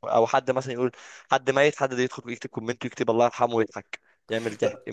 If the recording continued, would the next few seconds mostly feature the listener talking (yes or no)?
yes